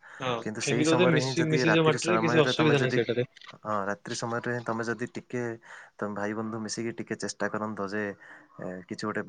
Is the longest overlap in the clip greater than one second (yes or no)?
yes